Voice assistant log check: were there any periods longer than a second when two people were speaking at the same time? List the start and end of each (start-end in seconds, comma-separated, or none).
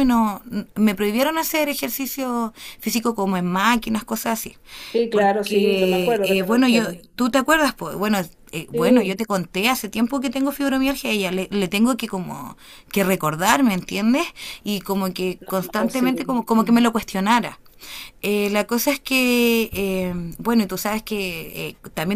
5.1-7.0, 15.4-16.9